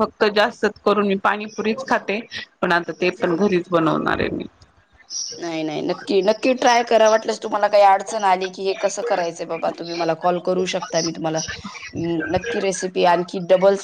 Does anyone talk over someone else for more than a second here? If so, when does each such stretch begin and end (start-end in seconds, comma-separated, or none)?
none